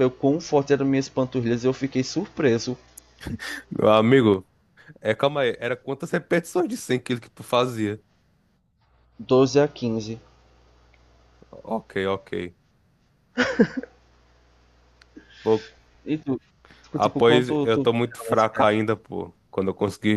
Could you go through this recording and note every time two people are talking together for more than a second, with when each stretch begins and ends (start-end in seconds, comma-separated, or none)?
17.0-18.4